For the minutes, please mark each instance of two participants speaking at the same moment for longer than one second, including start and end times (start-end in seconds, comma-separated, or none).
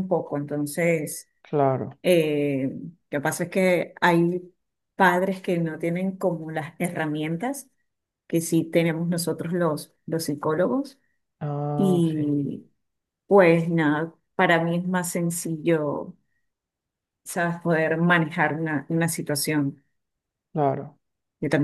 none